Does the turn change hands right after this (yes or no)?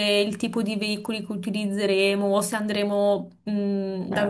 no